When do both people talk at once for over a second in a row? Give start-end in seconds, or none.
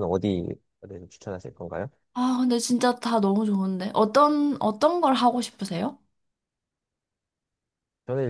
none